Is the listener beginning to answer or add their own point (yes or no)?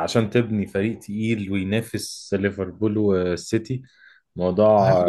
no